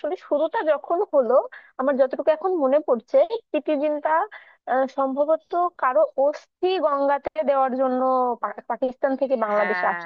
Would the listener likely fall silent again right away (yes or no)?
no